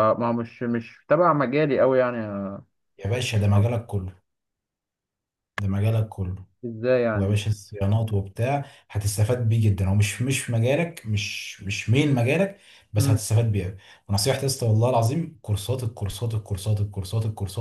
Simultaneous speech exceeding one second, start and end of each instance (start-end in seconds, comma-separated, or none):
none